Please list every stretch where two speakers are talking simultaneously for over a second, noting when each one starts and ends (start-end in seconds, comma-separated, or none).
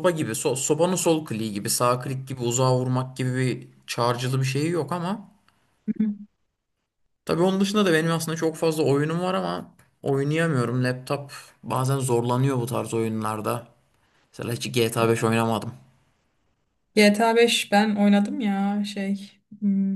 none